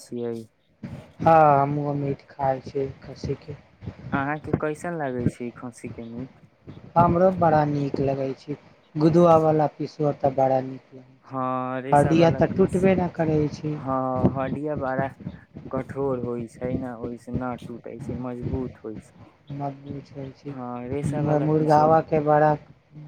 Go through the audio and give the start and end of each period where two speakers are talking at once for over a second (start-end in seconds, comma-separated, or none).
11.3-12.9, 20.5-21.9